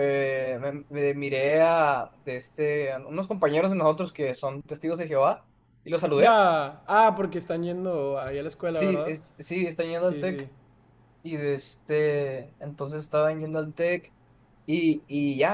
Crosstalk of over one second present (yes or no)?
no